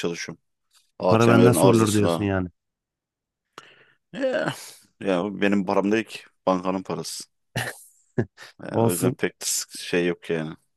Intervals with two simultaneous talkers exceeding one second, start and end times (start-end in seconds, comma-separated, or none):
1.1-2.3